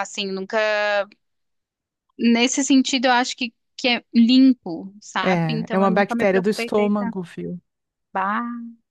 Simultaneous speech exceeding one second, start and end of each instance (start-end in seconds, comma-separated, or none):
5.2-7.2